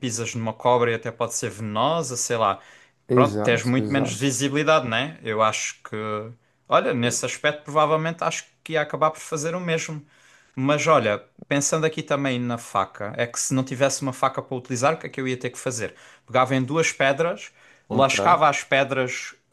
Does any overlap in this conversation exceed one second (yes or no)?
yes